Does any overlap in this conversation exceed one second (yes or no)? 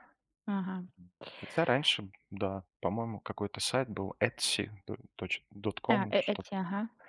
no